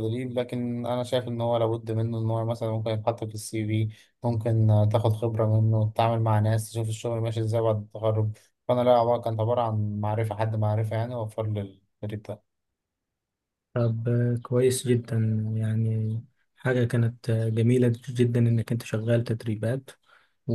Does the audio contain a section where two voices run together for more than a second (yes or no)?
no